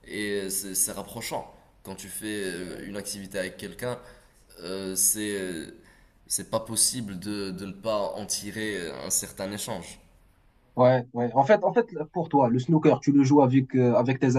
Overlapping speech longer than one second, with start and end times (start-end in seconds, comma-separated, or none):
none